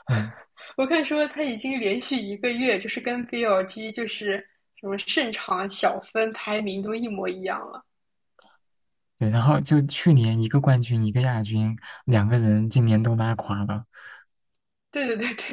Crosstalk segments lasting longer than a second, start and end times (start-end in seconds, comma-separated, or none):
none